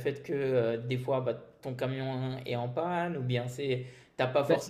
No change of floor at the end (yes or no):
yes